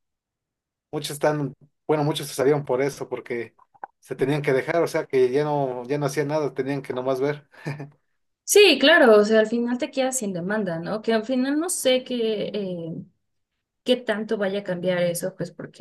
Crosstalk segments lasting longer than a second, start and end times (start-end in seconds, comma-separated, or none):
none